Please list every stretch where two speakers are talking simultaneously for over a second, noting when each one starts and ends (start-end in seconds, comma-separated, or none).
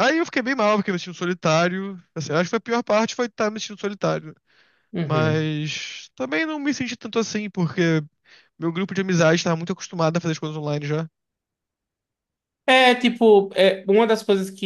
none